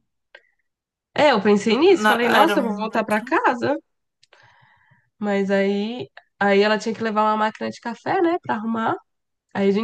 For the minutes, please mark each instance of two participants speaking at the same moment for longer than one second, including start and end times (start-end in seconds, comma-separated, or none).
1.7-3.4